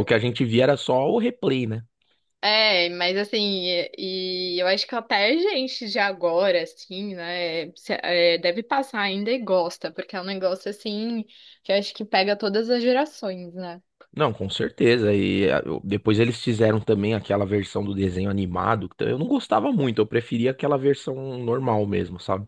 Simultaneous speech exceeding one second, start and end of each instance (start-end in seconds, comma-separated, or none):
none